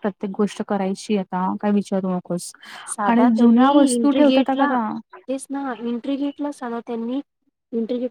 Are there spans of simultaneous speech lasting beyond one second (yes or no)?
yes